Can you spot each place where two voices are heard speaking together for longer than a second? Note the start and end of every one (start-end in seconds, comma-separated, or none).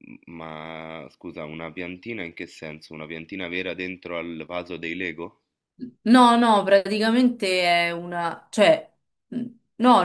none